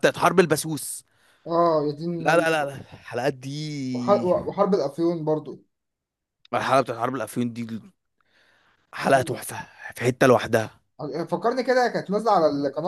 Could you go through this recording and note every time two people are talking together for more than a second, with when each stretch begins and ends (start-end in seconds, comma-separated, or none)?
none